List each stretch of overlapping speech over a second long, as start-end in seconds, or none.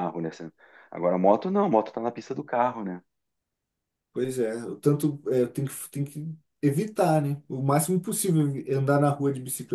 none